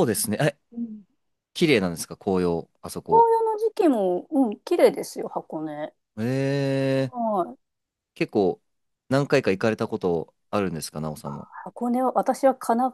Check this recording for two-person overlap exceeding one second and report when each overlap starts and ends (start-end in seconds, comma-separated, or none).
none